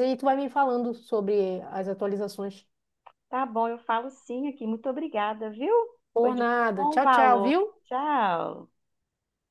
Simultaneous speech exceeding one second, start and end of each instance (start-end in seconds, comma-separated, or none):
6.2-7.6